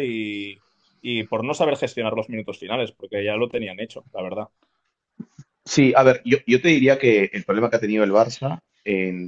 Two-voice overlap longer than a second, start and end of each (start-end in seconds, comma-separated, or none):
none